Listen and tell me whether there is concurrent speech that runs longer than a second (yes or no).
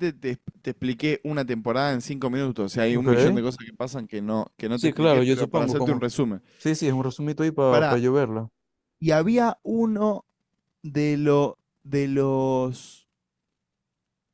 yes